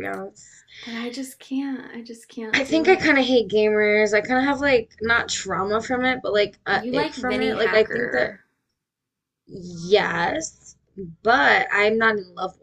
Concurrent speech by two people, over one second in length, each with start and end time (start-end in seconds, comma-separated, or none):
6.7-8.4